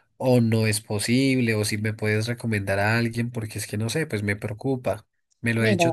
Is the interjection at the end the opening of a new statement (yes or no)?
no